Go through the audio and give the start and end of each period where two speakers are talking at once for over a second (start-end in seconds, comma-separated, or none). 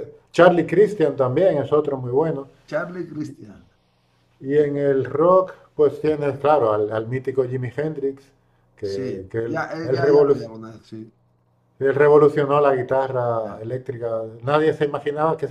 8.8-10.5